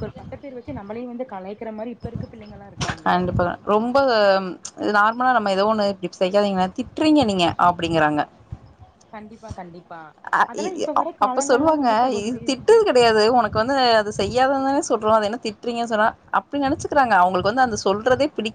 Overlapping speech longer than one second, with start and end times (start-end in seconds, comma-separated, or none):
none